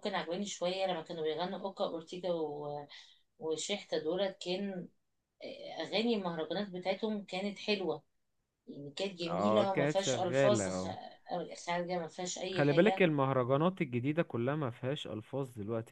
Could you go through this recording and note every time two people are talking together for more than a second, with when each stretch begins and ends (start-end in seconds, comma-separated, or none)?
9.2-10.9